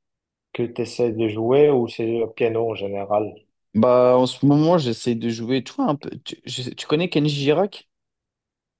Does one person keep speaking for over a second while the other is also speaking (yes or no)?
no